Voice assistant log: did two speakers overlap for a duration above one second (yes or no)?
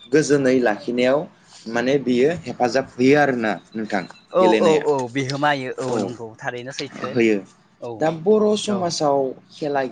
no